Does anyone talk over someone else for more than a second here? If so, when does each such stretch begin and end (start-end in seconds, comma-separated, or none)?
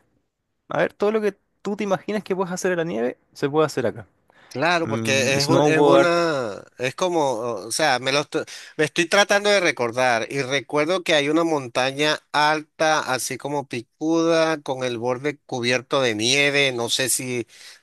4.8-6.1